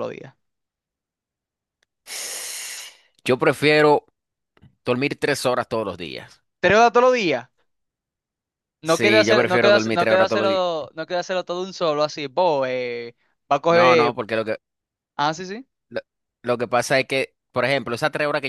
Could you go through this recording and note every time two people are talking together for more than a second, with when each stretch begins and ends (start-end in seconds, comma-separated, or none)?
8.8-10.6